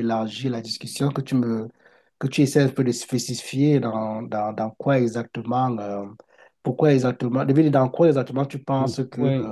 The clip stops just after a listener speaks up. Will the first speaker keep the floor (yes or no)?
no